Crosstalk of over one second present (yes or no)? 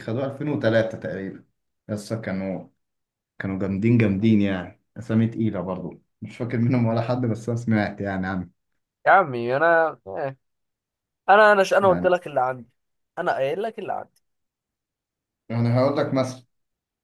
no